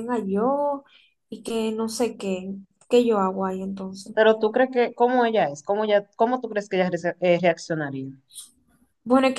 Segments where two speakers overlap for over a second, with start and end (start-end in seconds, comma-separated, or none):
none